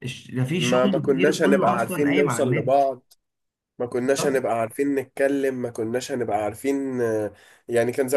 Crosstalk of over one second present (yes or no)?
yes